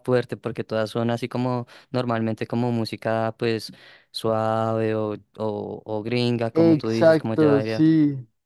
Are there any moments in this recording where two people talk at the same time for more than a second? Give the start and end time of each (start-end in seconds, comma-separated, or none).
6.5-7.8